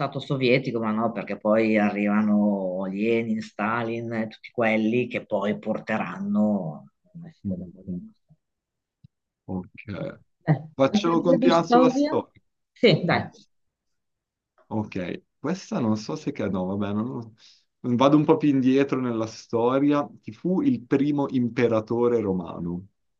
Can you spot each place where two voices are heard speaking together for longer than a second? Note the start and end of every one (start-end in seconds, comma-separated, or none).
10.7-12.1